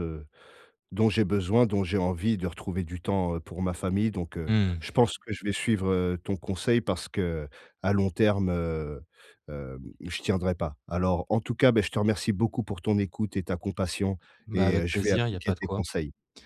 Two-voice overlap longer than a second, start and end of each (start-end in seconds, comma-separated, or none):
14.5-15.8